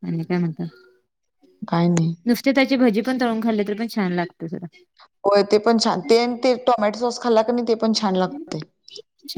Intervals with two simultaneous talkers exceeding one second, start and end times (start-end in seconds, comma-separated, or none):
none